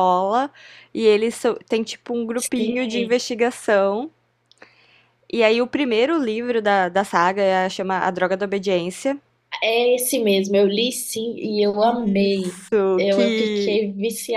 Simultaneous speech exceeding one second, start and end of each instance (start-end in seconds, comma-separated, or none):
11.8-13.8